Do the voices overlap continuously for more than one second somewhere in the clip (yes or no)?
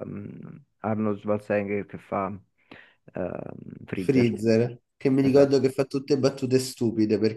no